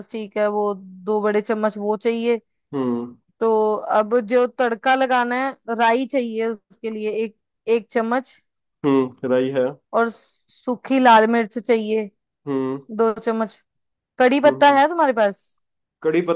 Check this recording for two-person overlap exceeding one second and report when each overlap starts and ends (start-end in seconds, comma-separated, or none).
none